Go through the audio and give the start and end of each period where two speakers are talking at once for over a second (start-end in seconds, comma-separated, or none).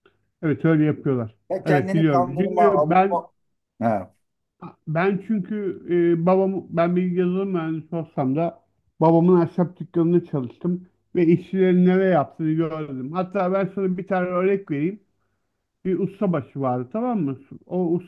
1.5-3.2